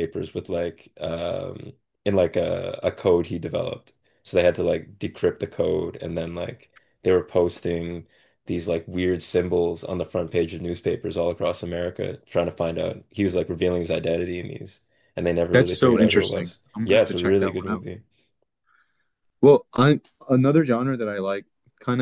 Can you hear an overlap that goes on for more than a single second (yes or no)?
yes